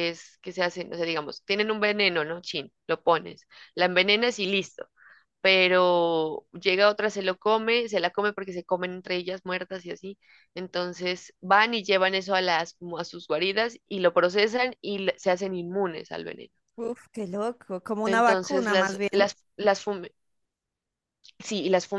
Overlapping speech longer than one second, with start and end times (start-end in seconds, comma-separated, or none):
18.0-19.3